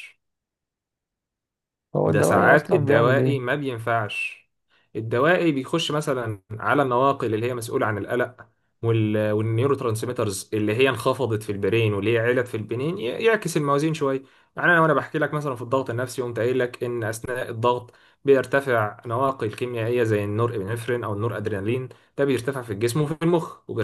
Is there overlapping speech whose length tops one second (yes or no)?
yes